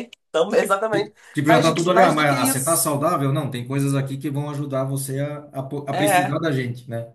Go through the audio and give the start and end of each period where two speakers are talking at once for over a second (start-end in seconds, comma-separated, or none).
1.3-2.9